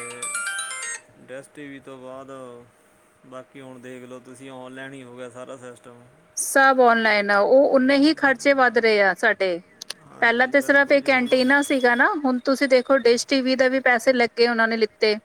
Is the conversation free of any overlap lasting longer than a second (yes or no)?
no